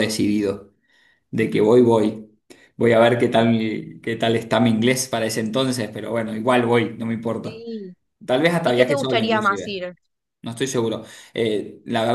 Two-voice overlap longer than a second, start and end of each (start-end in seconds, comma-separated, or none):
8.6-9.8